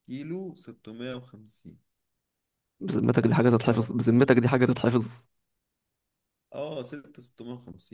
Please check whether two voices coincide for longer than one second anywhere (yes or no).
yes